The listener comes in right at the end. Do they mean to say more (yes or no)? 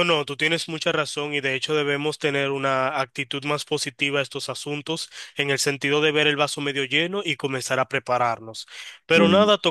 no